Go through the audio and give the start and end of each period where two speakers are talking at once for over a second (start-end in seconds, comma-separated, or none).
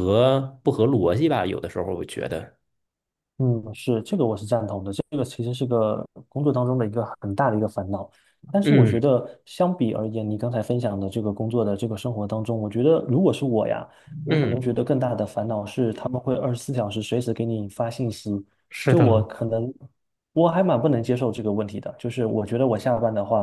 none